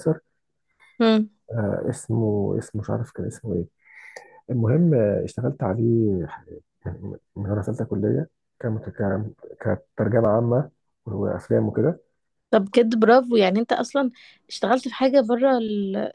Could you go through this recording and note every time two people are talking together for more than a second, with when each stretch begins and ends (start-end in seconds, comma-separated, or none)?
none